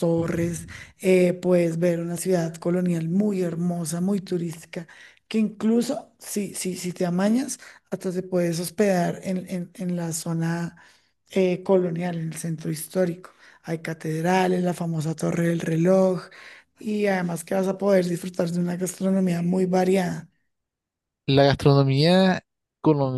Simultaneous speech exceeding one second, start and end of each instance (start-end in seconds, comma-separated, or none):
none